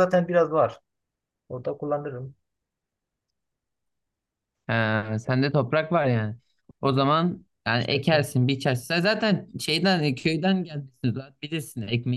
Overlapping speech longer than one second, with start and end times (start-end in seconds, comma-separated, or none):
none